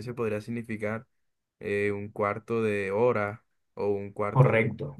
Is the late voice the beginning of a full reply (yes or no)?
no